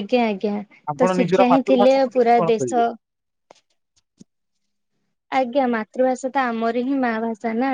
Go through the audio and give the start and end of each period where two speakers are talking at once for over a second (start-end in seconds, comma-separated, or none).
1.0-2.8